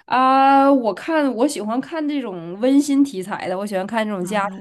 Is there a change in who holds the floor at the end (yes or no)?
no